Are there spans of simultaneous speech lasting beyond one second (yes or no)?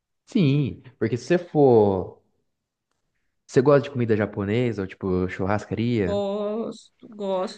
no